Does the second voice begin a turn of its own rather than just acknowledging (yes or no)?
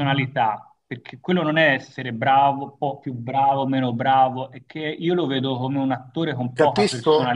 yes